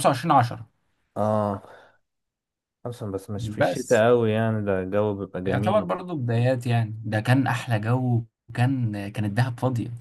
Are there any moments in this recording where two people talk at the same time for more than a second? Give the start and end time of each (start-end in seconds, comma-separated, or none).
none